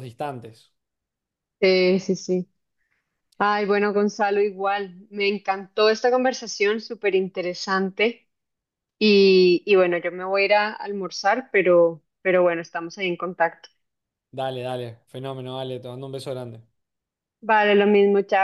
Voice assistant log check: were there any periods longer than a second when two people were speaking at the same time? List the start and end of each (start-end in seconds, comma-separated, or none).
none